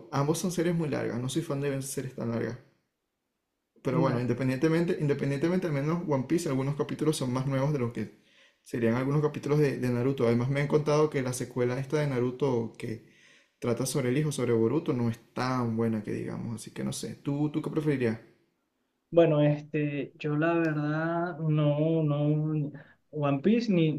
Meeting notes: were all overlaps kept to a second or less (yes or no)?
yes